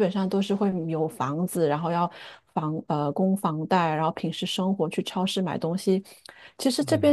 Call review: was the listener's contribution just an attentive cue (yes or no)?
yes